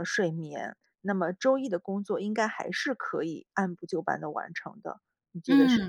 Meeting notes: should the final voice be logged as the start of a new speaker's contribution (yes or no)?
yes